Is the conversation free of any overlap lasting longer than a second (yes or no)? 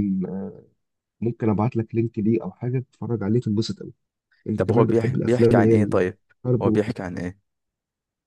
no